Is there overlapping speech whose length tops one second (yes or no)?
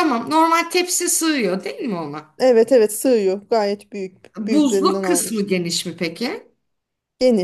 yes